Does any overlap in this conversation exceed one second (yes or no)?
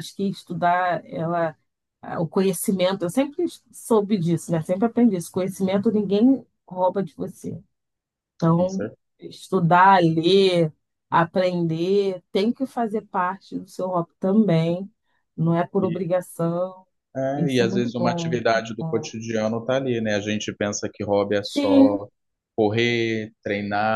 yes